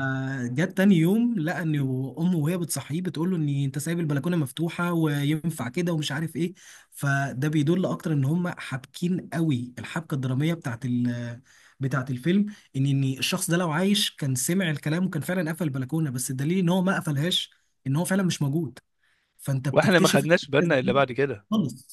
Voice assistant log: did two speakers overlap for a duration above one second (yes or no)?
yes